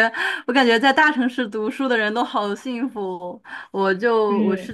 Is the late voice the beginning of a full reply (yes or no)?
no